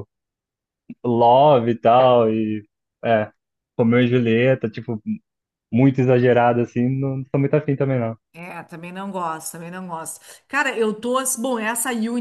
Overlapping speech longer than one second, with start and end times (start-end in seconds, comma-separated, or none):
none